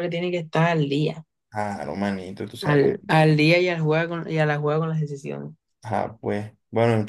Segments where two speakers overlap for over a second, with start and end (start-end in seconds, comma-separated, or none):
none